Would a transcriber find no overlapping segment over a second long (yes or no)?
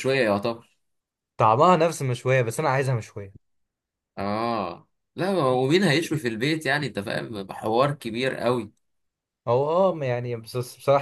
yes